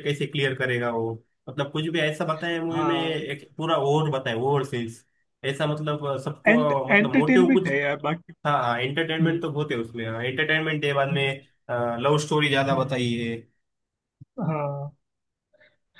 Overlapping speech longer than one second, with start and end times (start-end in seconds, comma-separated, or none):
6.5-7.7